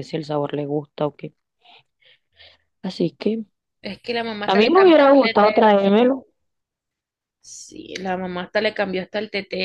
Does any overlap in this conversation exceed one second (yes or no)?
yes